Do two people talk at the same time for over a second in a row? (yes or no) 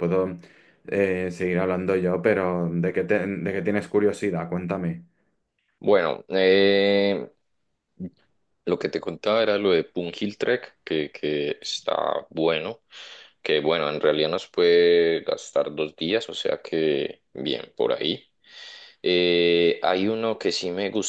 no